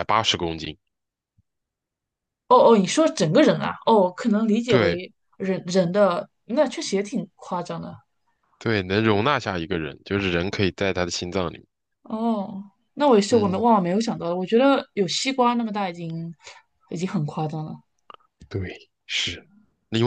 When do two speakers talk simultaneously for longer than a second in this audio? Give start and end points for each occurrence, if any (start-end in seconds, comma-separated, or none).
none